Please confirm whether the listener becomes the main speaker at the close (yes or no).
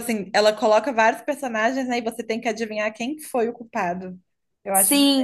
yes